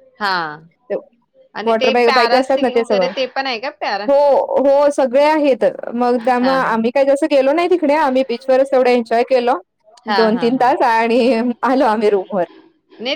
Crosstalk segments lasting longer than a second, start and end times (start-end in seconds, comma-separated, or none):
1.7-3.1